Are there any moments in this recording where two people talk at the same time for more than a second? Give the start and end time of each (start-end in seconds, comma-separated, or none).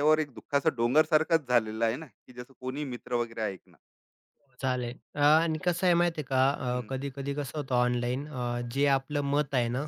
none